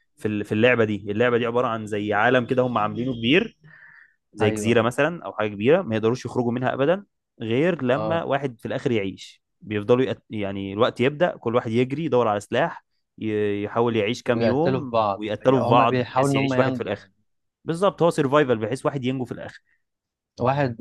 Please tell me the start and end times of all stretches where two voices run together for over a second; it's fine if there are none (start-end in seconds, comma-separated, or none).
14.2-17.1